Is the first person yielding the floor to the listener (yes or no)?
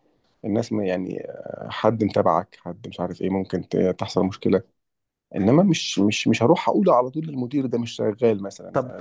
yes